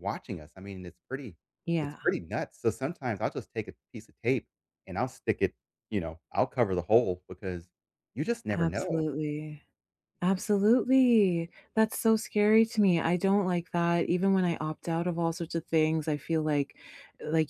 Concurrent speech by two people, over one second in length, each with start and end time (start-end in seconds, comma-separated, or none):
none